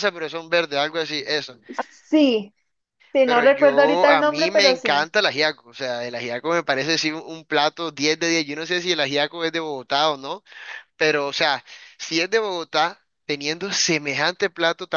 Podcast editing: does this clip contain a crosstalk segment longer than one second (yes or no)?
yes